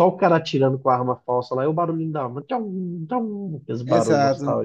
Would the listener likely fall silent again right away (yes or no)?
no